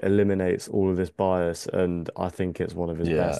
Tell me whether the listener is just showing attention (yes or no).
no